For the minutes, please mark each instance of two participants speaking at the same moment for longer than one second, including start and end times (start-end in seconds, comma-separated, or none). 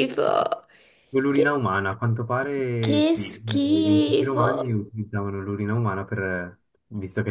2.8-4.5